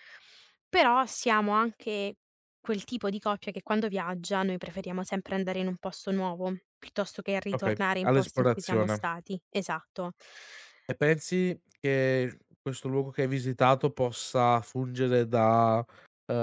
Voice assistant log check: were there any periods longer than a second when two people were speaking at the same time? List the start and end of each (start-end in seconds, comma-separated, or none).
7.5-9.1